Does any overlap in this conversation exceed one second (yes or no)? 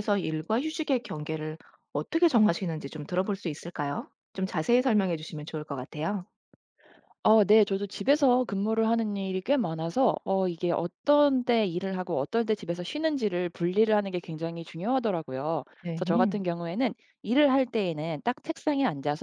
no